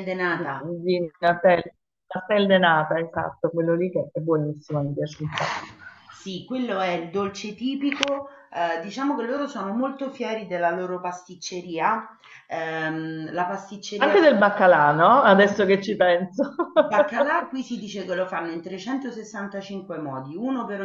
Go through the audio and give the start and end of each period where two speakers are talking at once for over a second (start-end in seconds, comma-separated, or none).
none